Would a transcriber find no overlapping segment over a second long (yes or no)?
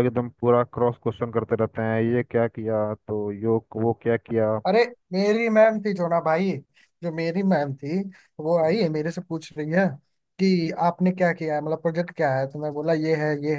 yes